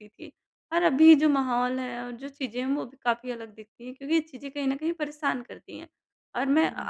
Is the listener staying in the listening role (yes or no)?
yes